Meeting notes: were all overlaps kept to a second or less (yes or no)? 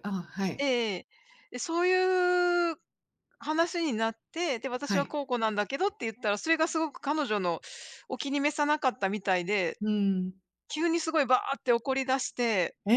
yes